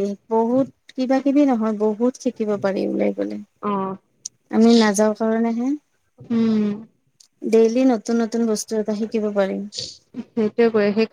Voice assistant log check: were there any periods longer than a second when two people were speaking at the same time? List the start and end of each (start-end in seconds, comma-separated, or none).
none